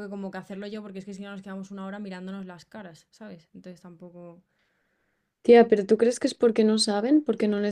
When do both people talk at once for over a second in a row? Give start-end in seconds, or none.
none